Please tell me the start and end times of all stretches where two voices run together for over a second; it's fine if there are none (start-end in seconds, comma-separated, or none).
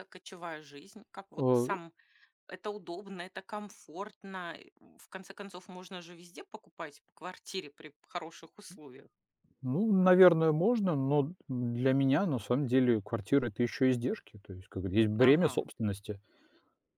none